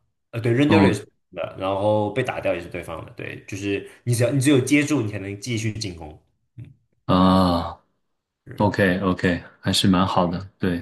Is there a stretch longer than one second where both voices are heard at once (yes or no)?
no